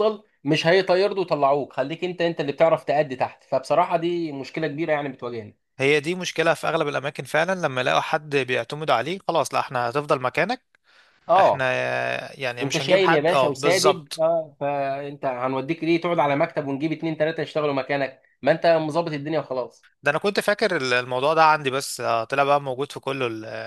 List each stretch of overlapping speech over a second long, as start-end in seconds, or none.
12.6-14.2